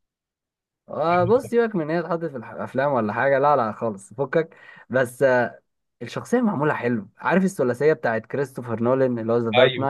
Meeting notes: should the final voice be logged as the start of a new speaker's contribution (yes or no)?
yes